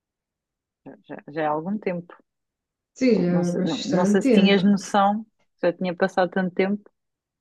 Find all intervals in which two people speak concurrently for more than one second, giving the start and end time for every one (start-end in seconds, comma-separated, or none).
3.2-4.6